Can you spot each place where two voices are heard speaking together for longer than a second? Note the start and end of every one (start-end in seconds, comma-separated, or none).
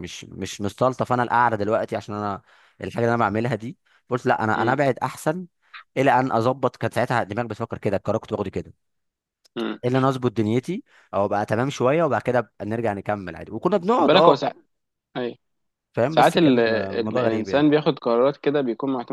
16.1-17.7